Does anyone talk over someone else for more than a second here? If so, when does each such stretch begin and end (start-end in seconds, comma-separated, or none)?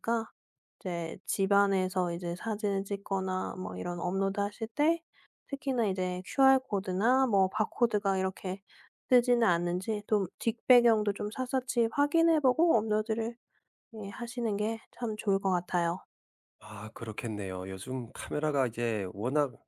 none